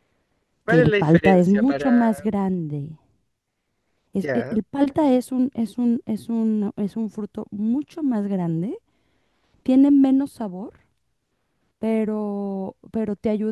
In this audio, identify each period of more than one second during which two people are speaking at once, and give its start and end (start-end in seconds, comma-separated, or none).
0.7-1.9